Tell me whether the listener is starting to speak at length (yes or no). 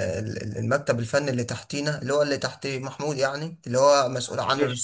no